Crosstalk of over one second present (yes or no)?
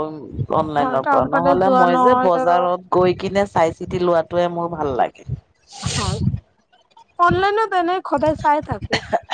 yes